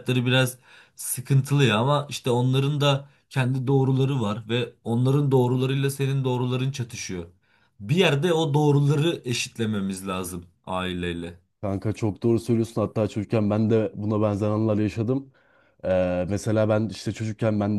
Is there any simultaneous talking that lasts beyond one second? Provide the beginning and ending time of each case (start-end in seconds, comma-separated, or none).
none